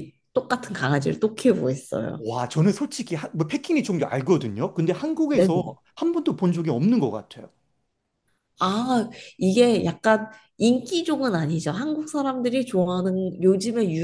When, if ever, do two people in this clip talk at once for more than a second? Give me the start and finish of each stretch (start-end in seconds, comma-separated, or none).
none